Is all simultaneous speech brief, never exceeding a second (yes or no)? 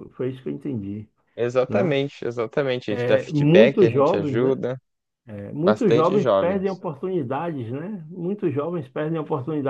no